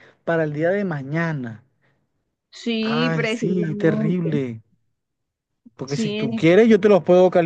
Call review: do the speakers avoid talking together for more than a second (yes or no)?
no